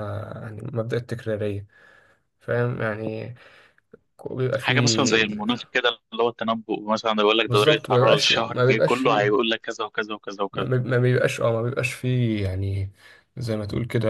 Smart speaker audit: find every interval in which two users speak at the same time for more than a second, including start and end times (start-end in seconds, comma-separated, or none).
7.5-9.4